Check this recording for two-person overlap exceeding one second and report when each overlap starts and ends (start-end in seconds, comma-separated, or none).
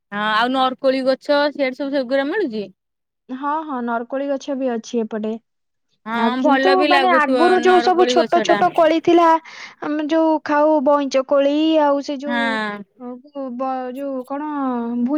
6.2-8.7